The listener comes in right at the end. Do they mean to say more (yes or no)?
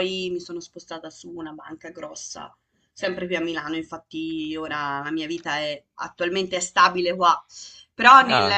no